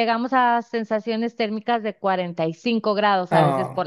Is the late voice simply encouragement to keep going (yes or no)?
no